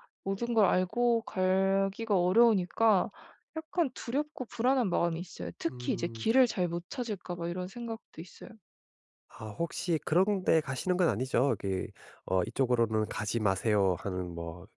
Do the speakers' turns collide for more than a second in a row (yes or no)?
no